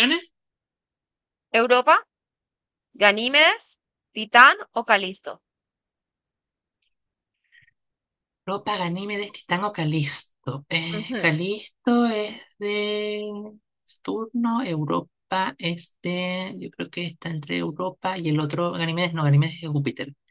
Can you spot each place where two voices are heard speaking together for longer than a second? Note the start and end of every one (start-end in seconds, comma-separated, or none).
none